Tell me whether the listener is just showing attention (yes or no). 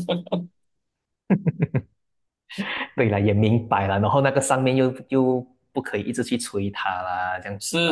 no